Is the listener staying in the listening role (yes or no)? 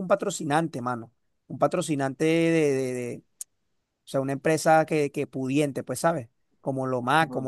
yes